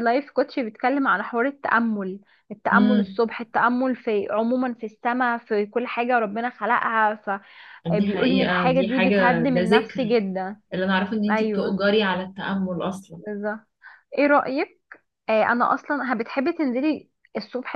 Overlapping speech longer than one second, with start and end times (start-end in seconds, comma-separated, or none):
7.8-10.2